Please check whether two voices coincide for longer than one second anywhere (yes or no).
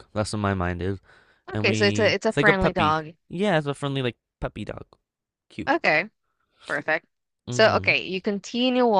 yes